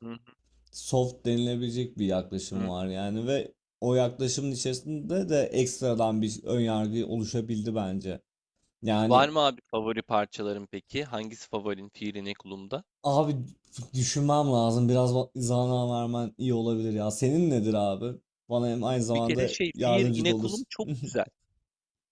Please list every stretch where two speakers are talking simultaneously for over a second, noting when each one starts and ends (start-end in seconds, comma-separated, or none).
18.9-20.7